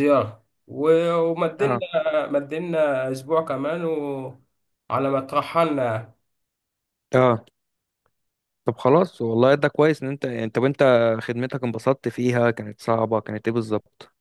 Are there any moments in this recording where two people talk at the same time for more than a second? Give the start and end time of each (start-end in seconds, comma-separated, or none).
none